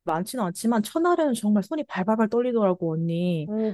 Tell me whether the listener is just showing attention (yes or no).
no